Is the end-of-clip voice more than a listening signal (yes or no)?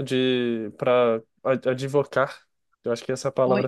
yes